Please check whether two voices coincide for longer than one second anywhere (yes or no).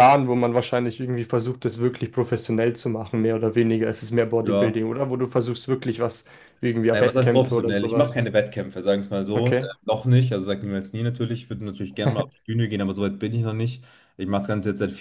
yes